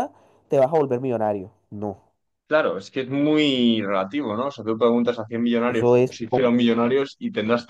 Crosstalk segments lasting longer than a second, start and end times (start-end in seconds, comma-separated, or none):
none